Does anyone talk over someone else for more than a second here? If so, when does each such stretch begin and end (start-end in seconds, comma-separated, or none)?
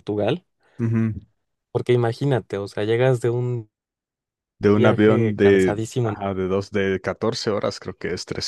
4.7-6.2